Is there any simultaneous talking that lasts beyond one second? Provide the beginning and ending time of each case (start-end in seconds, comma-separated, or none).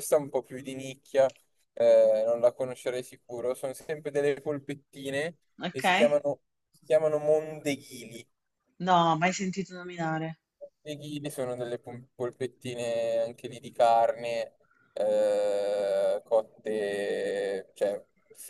none